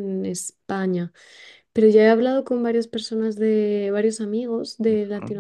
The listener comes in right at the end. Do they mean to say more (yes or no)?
no